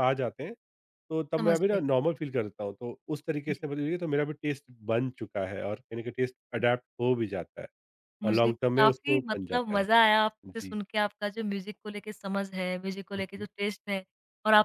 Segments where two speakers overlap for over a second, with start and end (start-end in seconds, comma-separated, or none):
8.2-9.8